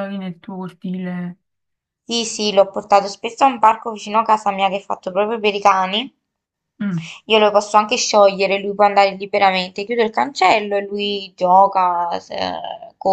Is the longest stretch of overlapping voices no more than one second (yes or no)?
yes